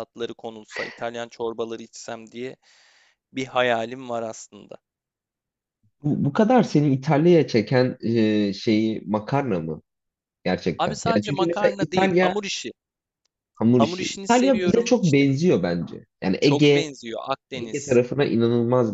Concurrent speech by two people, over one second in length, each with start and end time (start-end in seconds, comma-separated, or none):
10.8-12.4, 13.7-15.2